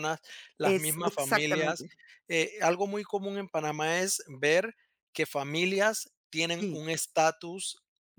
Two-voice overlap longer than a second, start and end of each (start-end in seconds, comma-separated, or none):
0.6-1.9